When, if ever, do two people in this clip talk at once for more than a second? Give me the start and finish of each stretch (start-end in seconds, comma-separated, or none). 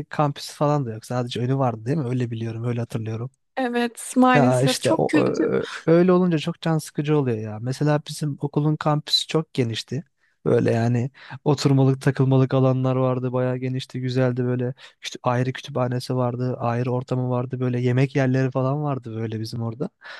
4.3-5.6